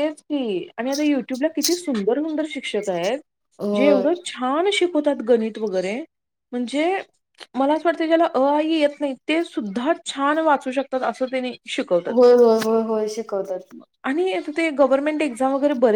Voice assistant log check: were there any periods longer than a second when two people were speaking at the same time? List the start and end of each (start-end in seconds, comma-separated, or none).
none